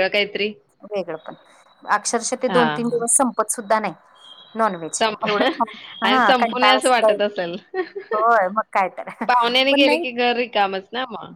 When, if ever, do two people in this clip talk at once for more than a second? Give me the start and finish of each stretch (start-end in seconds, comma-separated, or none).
6.0-7.5